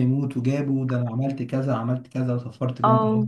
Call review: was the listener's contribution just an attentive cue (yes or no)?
yes